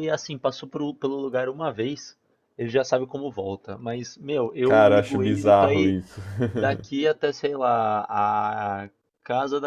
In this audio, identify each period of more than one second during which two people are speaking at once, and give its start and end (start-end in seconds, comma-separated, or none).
4.6-6.0